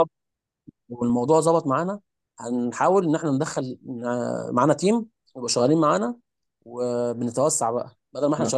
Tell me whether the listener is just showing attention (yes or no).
yes